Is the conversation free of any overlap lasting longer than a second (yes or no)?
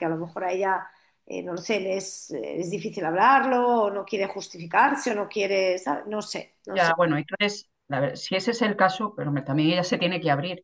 yes